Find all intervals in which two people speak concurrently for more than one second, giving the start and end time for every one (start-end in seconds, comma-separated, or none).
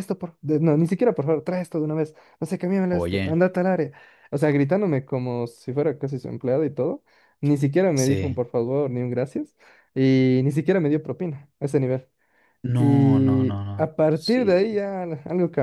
12.8-14.8